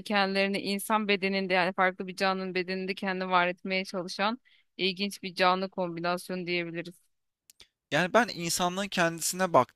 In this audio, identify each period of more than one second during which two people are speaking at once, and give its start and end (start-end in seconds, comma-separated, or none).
none